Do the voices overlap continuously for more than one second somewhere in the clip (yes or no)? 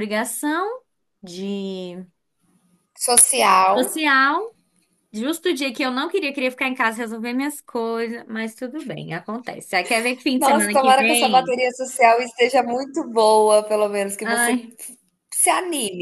yes